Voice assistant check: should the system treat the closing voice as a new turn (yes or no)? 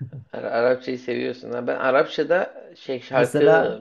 no